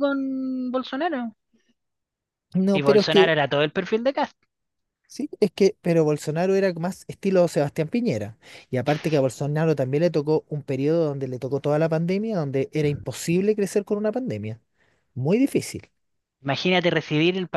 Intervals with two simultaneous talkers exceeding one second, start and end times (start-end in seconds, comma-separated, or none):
none